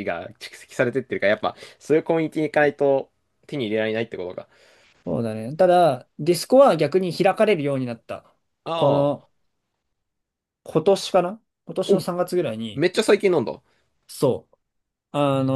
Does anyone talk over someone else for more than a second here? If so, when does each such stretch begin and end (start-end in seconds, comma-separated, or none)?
none